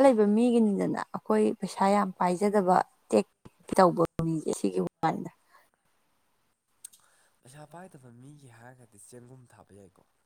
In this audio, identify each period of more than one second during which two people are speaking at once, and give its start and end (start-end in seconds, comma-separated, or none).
none